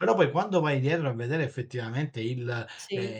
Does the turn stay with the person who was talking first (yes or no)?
yes